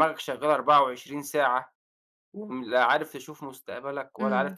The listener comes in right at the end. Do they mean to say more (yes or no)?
yes